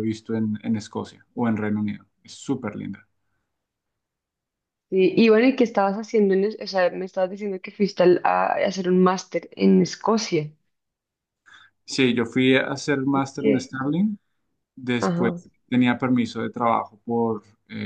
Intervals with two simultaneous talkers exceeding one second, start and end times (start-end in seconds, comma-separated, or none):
none